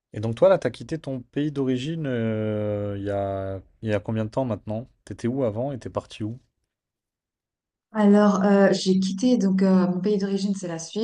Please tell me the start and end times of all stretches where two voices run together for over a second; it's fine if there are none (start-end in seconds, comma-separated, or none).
none